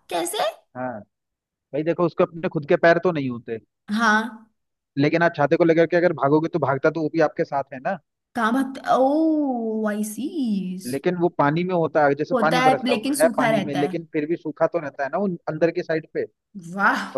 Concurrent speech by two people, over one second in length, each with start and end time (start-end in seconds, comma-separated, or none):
12.3-14.0